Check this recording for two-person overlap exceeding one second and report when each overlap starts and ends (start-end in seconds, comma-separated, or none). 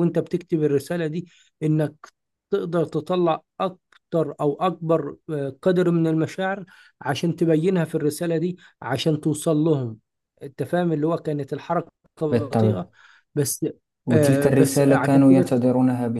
14.1-15.5